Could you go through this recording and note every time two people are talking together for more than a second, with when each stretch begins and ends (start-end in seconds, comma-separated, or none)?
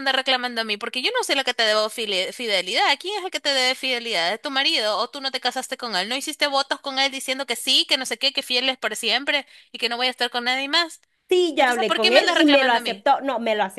11.6-13.1